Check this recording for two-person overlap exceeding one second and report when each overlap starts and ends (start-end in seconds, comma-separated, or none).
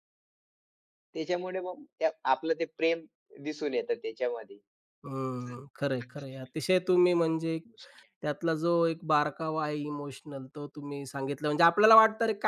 5.4-7.6